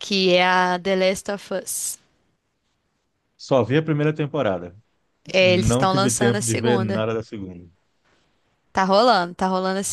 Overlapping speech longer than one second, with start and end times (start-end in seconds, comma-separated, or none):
5.4-7.0